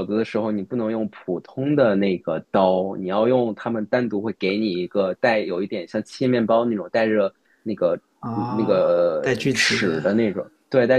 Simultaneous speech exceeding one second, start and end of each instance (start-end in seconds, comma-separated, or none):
8.2-10.0